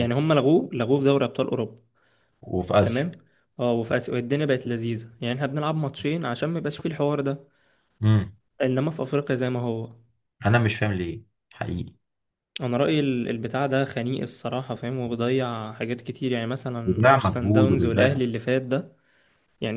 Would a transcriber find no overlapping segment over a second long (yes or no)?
no